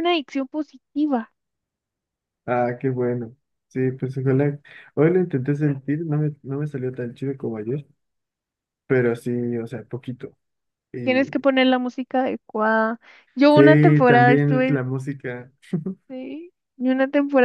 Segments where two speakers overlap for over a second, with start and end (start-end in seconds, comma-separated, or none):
13.5-14.8